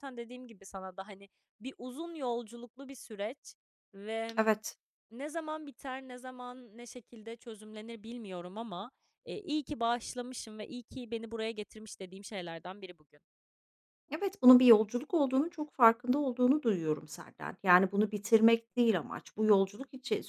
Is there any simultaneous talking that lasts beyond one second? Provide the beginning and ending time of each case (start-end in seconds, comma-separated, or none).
none